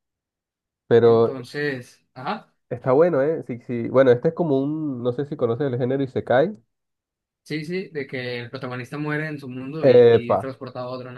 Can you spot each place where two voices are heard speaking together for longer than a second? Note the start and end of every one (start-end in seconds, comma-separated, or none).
none